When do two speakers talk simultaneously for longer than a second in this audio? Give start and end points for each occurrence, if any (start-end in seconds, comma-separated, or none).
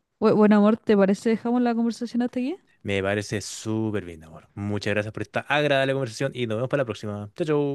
none